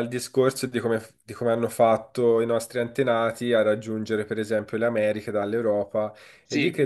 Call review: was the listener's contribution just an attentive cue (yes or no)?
yes